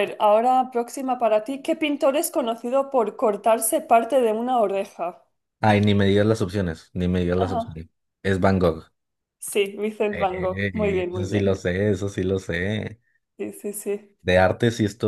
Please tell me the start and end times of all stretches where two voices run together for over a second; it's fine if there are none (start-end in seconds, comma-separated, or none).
10.1-11.6